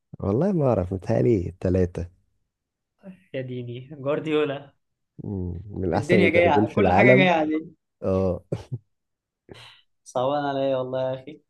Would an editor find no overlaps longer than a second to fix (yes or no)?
no